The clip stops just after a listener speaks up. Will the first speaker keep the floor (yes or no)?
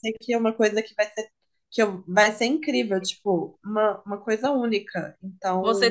no